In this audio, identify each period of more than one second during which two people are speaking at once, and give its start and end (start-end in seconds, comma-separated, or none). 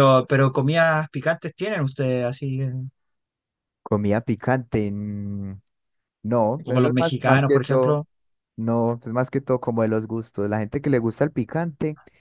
6.6-8.0